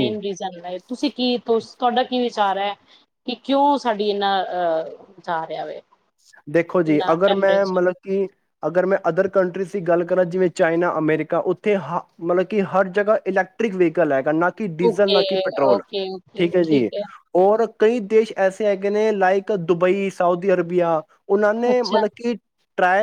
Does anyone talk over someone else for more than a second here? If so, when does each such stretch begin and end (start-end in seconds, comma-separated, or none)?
none